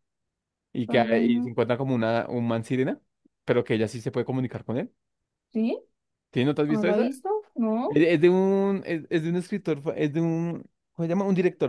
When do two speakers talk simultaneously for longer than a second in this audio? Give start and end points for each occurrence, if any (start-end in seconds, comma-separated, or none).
none